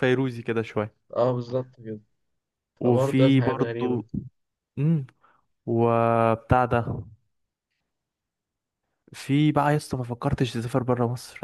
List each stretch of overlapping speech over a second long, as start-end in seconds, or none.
2.8-4.0